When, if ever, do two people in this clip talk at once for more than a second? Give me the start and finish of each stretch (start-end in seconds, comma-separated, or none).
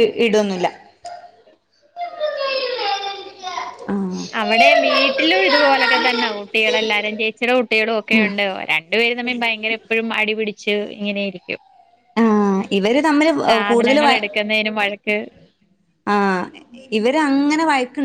none